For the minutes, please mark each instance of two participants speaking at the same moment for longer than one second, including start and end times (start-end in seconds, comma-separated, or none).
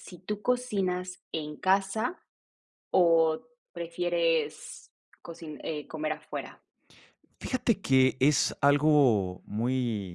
none